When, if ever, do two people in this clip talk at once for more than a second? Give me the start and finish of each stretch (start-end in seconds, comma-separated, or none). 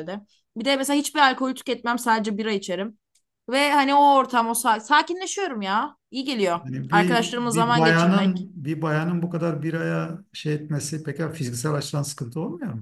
6.6-8.5